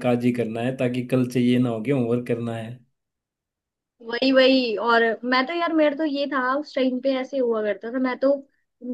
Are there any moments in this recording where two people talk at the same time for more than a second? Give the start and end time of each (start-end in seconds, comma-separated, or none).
none